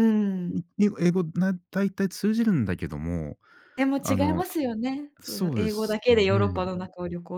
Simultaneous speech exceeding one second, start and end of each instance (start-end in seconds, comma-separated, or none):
5.2-6.7